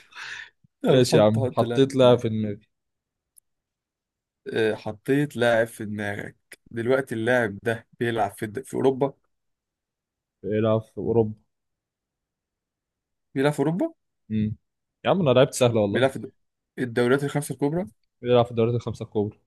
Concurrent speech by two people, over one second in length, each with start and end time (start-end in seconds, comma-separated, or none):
0.9-2.2